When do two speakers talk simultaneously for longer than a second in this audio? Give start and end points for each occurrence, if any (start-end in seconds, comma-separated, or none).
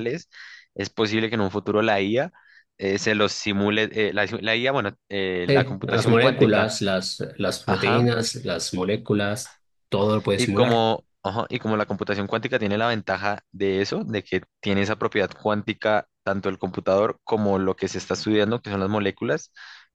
5.5-6.7